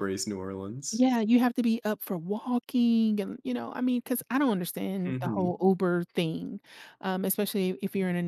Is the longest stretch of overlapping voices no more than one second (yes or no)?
yes